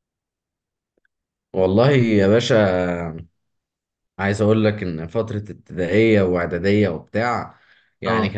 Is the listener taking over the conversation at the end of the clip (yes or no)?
no